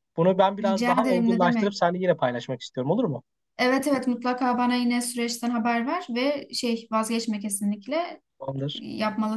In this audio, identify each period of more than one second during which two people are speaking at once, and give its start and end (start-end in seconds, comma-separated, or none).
0.6-1.8